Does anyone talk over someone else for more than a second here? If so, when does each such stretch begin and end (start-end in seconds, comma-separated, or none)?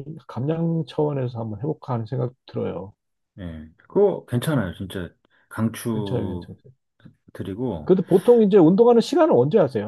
none